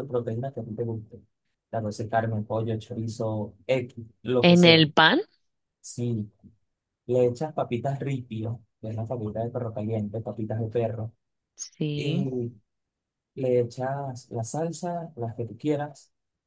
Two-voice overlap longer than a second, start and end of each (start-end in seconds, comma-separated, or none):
none